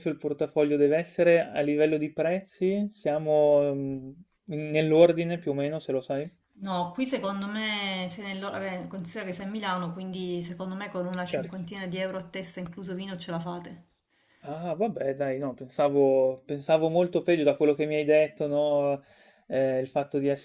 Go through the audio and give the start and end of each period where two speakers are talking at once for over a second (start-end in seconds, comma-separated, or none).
none